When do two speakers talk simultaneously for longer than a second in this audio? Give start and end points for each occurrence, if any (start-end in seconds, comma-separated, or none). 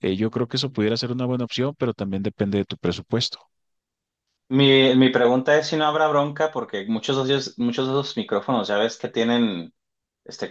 none